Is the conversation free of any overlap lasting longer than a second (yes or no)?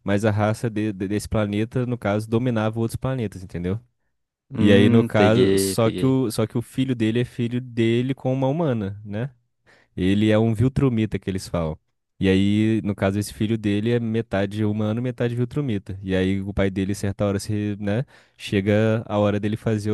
no